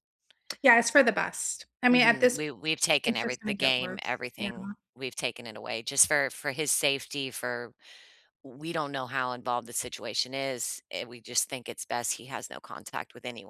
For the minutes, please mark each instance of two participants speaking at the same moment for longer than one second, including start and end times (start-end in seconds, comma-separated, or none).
3.0-4.5